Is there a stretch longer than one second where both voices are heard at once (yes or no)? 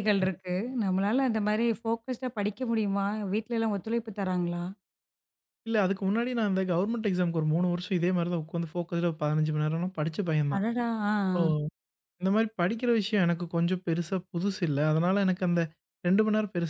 no